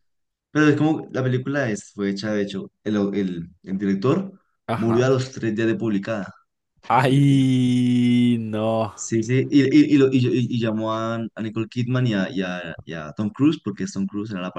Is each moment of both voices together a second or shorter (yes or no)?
yes